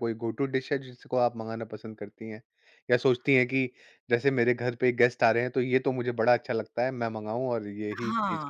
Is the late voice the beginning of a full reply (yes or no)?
yes